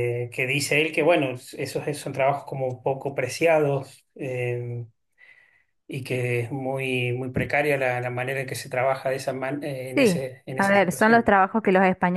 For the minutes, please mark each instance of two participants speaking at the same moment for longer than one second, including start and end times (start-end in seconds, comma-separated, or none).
9.9-11.3